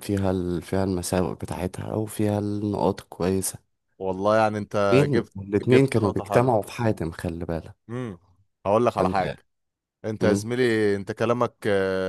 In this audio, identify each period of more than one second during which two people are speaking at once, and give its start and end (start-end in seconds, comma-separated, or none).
4.9-6.5